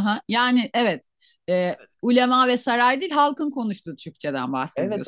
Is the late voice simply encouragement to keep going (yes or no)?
no